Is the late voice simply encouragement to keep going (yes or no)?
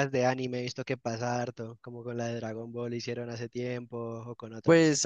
no